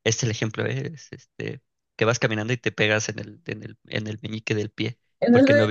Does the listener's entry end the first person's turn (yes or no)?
yes